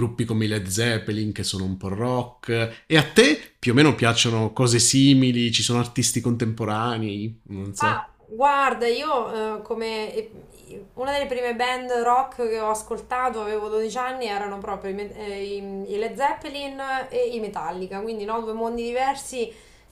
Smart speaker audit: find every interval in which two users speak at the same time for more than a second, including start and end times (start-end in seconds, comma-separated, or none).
none